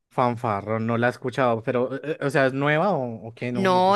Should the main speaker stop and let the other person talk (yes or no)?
yes